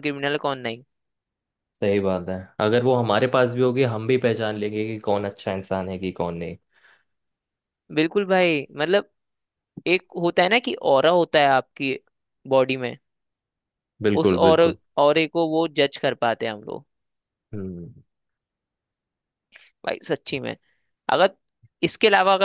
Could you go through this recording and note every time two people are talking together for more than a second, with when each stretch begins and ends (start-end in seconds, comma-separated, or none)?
none